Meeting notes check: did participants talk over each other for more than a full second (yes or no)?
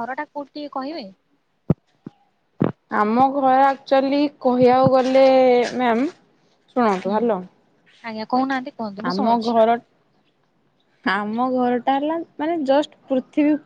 no